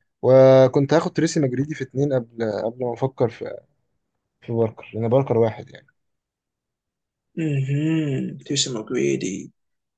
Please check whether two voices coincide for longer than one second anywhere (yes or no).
no